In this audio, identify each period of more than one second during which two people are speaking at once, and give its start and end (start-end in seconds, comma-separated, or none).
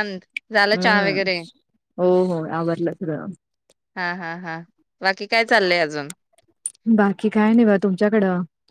none